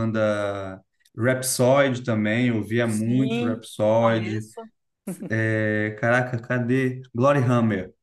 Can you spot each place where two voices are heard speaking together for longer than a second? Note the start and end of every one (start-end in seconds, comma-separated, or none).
2.8-4.5